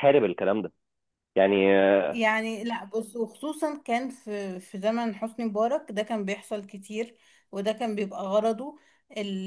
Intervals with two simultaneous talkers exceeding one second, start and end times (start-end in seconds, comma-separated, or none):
none